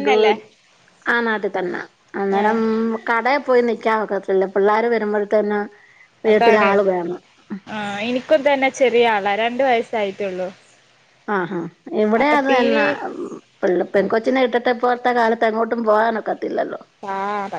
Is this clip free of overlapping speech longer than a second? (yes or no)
yes